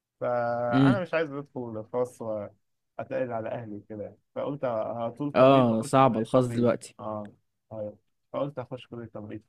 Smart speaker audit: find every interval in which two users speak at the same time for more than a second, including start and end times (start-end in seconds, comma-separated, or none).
5.3-7.0